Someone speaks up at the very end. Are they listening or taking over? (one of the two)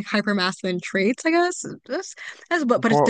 listening